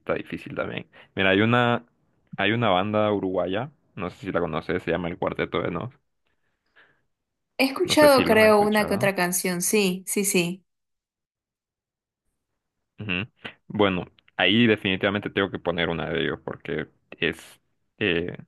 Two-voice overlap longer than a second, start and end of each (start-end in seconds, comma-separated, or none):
7.9-9.1